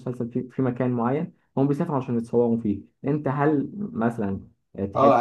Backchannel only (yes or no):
no